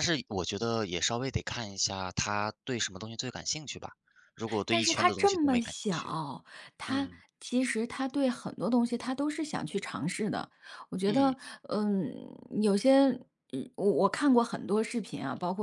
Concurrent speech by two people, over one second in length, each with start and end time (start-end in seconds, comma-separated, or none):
4.7-6.2